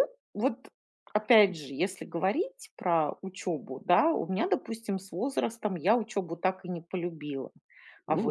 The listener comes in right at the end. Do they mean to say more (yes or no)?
yes